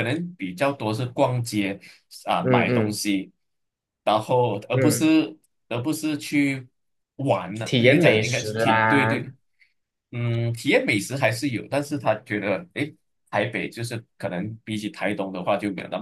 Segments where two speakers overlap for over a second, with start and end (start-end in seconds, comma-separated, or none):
7.6-9.3